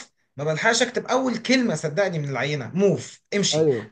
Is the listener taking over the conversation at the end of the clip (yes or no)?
no